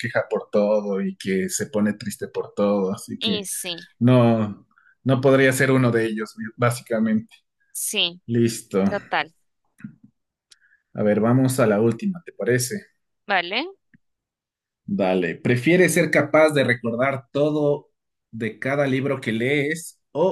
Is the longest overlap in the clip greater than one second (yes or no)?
no